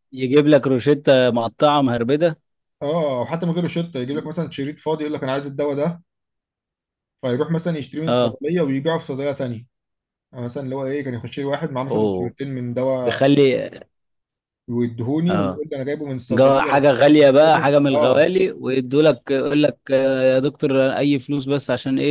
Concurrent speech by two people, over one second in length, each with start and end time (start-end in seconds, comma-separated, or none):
16.3-18.3